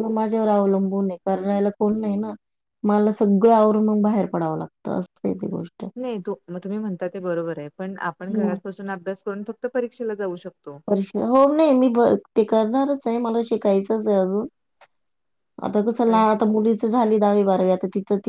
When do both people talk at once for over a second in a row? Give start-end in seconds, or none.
none